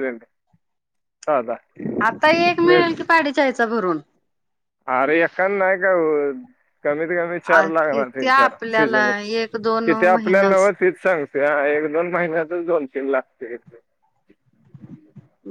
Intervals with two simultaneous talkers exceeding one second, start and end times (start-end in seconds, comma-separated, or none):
7.9-10.7